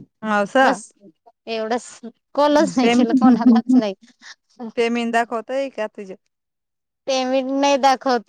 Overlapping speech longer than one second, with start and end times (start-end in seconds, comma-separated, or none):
none